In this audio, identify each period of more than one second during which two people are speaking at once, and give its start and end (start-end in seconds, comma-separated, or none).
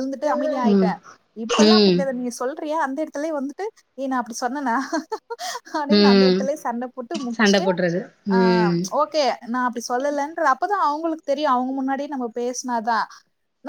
none